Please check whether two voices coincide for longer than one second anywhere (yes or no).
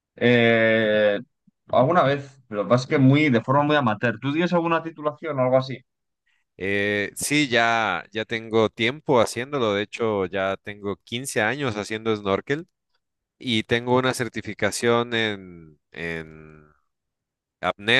no